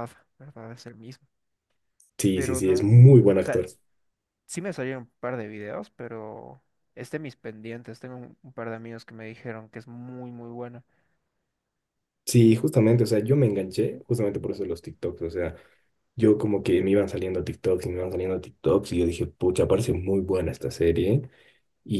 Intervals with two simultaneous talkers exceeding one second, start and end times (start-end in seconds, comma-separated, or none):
2.3-3.7